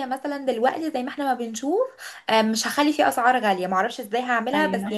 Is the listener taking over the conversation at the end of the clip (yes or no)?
no